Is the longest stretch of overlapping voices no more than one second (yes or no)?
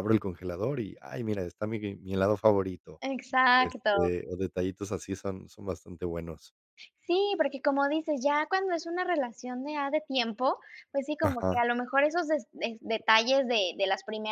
yes